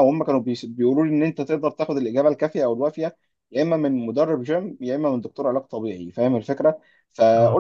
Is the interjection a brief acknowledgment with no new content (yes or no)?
yes